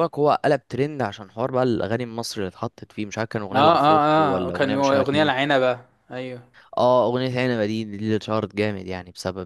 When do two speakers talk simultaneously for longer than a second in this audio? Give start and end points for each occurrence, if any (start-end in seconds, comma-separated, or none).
3.5-5.3